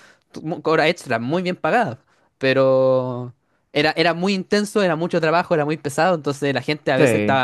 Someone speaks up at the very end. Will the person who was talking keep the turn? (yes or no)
yes